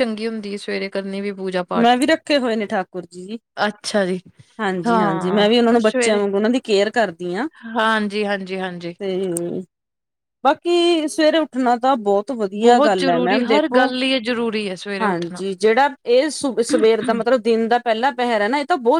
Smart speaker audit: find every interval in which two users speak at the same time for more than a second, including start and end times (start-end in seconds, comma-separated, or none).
12.6-13.9